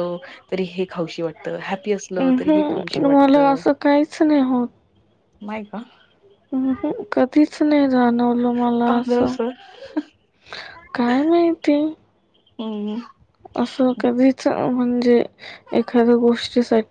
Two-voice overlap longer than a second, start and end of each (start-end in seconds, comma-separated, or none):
2.2-3.6